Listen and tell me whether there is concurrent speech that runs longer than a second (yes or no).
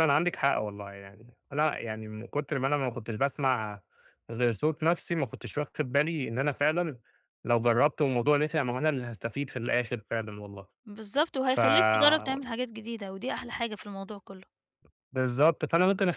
no